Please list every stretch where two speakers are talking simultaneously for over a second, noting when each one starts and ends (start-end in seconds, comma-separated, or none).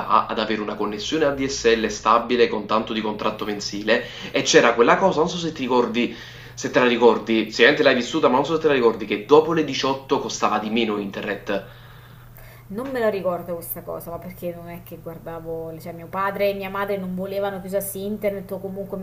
none